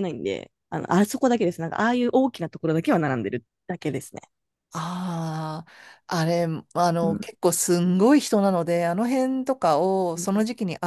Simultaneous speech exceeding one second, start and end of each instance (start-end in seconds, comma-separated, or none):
none